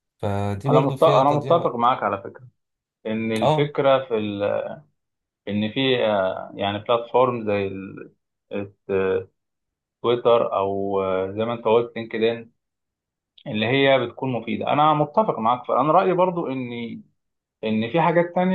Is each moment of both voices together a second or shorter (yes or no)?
no